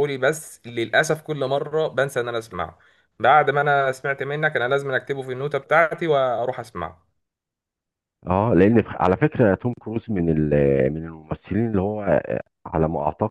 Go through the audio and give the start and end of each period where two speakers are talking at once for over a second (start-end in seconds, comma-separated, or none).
none